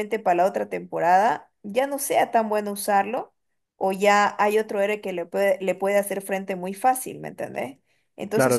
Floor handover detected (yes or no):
no